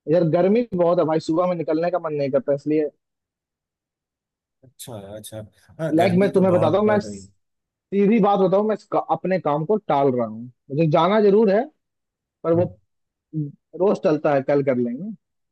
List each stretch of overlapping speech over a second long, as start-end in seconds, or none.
6.0-7.3